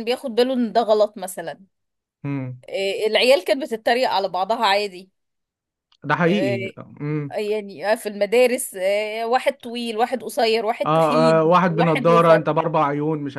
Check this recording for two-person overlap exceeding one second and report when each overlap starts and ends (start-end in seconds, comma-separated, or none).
10.8-12.4